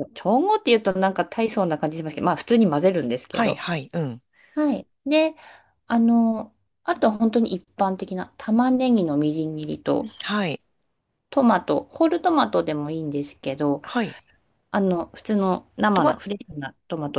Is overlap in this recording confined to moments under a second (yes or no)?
yes